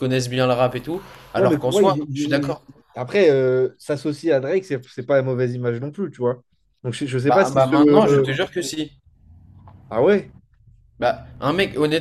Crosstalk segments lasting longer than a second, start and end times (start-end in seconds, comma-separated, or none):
1.4-2.5